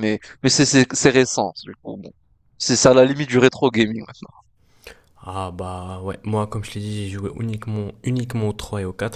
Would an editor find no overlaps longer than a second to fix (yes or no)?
yes